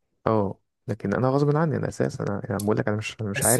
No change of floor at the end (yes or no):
no